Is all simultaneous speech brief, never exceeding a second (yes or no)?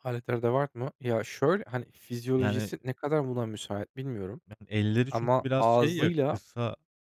no